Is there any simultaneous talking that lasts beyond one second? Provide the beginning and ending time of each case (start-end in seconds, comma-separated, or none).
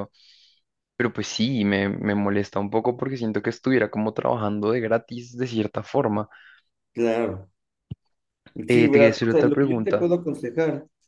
8.7-10.1